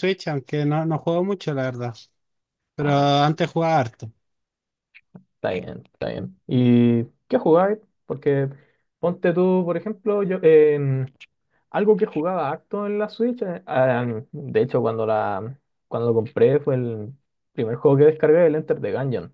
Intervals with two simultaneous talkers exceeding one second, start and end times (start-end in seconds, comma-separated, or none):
none